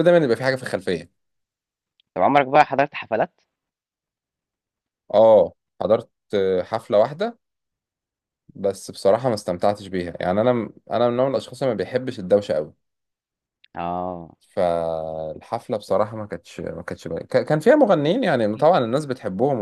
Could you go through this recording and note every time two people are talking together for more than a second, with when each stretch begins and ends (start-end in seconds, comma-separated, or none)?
none